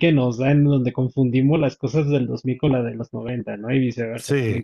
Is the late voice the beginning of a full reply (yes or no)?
no